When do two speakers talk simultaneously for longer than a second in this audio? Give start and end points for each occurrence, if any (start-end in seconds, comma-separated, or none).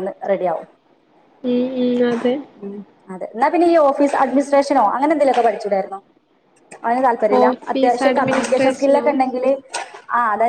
7.4-9.1